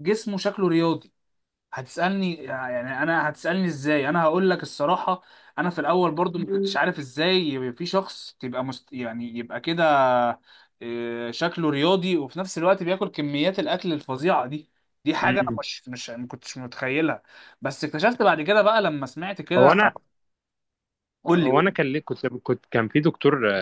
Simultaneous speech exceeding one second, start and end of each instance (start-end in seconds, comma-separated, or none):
none